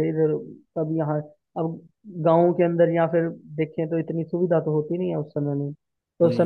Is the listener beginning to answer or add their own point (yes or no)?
no